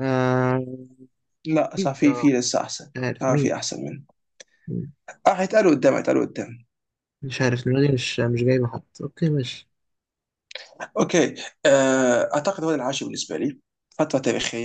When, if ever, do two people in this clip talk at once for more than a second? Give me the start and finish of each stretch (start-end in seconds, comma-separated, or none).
none